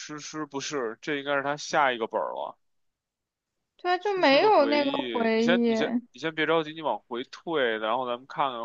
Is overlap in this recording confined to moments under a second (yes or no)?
no